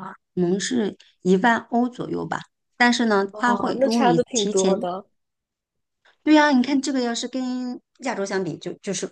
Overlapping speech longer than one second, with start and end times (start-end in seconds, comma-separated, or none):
3.3-4.9